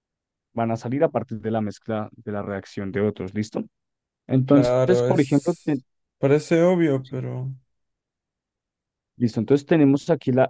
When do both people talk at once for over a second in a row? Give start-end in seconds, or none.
4.5-5.8